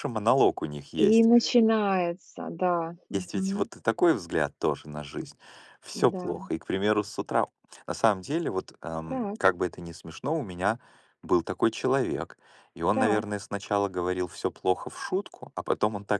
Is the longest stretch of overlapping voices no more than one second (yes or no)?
yes